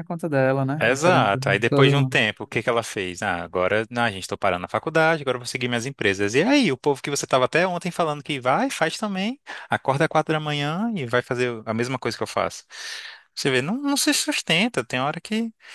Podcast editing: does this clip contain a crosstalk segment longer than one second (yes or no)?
yes